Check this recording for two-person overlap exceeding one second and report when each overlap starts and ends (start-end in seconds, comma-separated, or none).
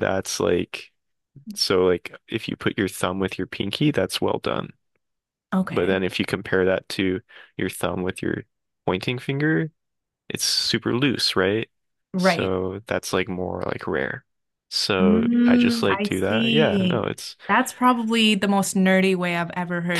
15.0-17.1